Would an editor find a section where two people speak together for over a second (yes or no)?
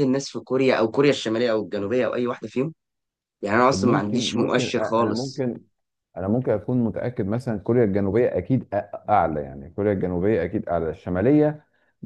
yes